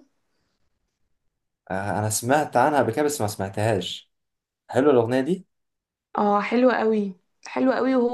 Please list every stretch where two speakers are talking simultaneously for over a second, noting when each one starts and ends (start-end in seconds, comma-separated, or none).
none